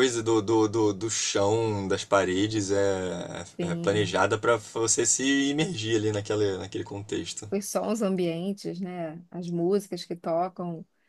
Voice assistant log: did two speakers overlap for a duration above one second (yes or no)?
no